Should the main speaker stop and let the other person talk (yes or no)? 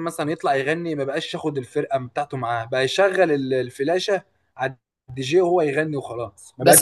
yes